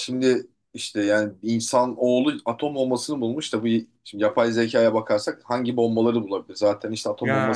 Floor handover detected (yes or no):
no